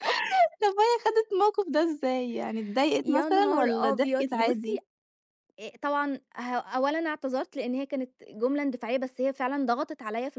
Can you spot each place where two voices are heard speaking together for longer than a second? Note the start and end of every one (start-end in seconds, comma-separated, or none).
3.0-4.8